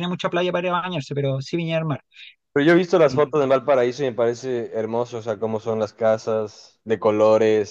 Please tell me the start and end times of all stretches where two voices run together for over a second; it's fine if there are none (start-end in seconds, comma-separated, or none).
none